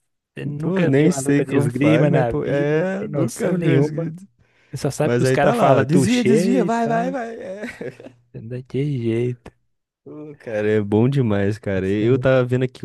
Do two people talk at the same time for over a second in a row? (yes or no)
yes